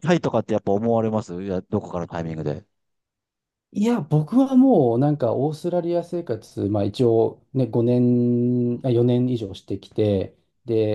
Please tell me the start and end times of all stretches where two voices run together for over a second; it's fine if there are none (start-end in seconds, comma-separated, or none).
none